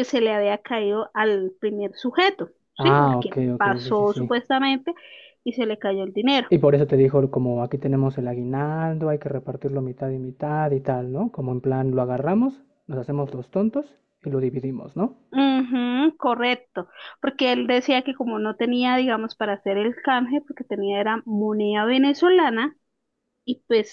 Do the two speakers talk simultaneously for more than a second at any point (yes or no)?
yes